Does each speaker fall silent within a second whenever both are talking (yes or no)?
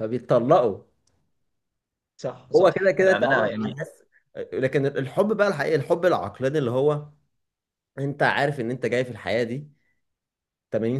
no